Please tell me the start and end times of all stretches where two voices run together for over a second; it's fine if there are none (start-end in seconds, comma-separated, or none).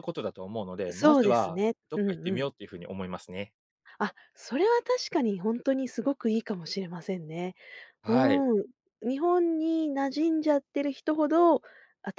0.9-2.5